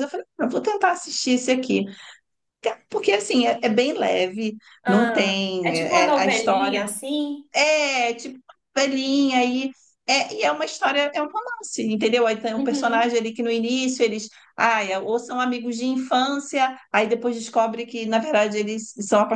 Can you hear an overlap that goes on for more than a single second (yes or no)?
yes